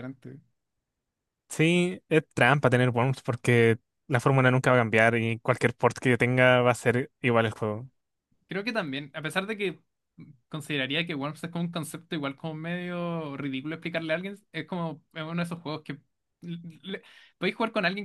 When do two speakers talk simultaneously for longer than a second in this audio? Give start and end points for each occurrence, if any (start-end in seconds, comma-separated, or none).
none